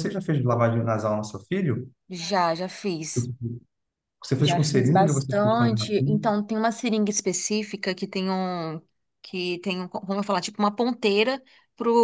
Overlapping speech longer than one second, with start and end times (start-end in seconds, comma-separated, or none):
4.4-6.3